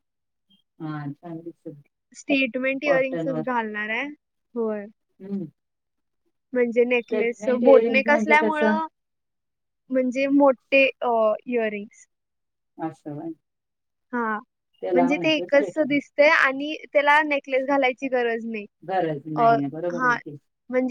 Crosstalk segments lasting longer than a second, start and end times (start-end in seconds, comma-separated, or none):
7.1-8.8